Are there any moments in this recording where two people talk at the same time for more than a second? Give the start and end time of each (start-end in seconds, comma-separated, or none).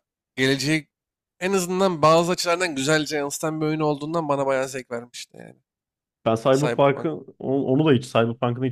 none